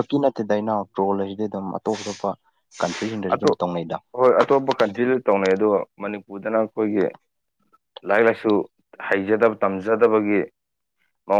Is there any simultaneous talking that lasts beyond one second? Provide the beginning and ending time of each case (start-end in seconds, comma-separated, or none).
none